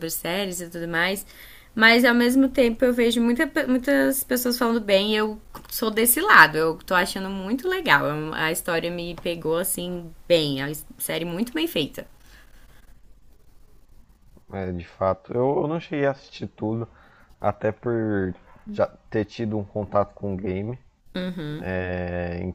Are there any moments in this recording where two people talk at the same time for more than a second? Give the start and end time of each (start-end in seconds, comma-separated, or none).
none